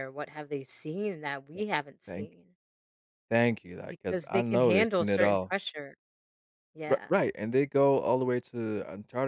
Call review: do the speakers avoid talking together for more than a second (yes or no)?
no